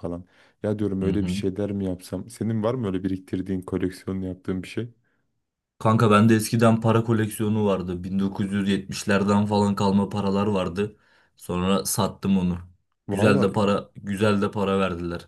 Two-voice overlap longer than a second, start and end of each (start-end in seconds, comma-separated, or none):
none